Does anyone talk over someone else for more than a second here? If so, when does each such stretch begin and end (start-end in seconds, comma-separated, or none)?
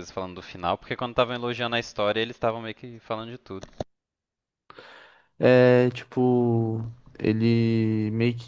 none